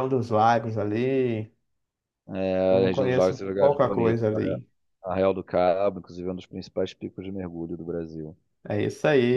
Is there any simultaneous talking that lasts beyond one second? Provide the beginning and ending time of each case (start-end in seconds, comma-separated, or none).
2.7-4.6